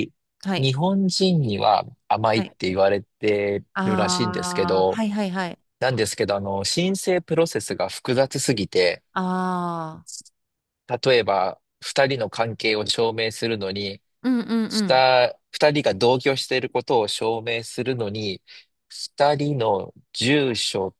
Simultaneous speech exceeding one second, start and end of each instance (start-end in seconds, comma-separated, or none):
3.7-5.0